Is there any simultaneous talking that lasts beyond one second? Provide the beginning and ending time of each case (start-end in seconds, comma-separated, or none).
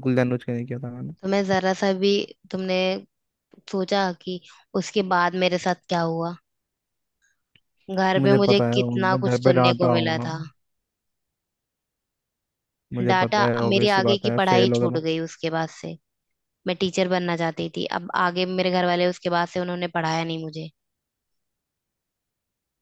8.2-10.3, 13.1-15.0